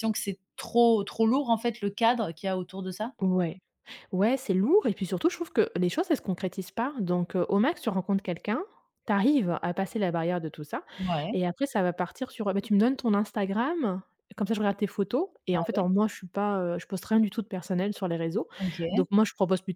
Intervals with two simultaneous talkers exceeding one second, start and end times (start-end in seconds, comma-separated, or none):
none